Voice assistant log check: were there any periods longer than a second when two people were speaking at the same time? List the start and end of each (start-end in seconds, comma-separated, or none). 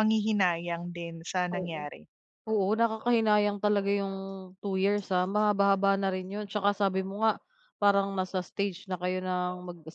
none